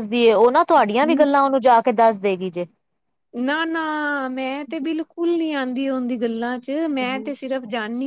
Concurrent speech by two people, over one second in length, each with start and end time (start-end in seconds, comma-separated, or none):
none